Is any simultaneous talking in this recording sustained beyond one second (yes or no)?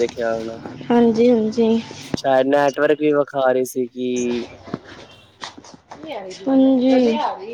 no